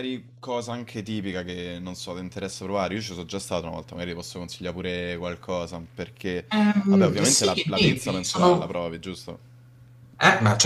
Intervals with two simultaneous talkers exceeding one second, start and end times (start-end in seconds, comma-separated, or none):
6.9-8.7